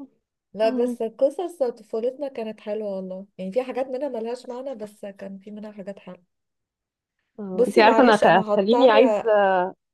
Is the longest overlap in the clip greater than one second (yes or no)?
yes